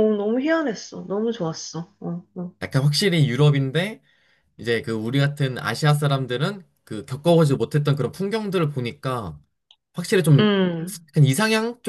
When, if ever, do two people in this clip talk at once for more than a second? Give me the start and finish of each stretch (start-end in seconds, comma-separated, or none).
none